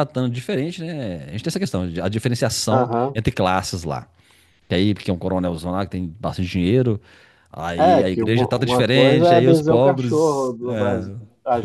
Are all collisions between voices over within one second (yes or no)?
no